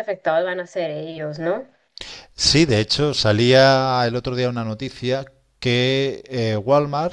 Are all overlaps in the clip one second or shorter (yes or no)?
yes